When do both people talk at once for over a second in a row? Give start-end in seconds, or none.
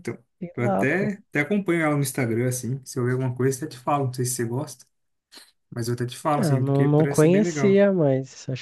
6.4-7.8